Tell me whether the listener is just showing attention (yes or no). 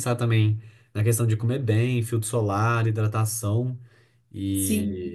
no